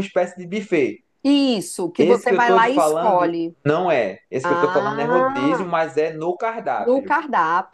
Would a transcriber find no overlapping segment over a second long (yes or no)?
no